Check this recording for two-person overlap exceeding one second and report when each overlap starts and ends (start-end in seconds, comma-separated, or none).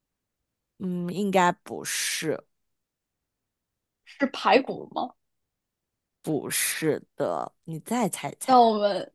none